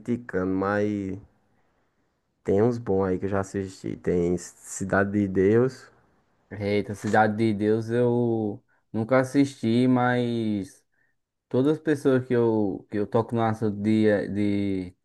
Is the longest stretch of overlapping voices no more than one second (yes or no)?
yes